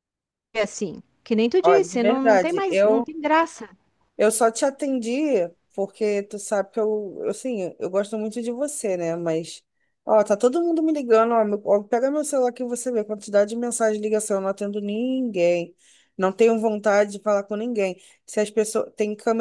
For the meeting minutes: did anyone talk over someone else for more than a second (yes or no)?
yes